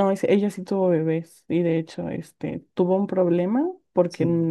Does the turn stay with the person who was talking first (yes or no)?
yes